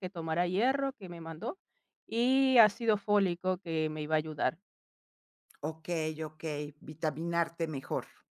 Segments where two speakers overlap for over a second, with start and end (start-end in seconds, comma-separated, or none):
none